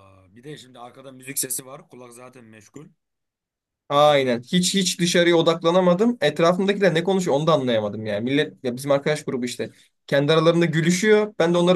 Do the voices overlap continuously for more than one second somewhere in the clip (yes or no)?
no